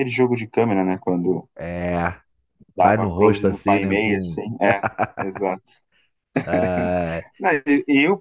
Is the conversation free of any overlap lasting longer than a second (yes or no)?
no